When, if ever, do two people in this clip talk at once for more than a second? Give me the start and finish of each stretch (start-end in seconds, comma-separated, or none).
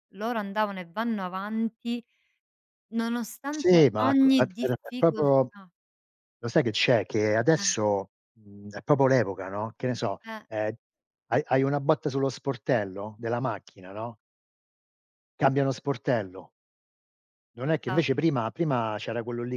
3.5-5.5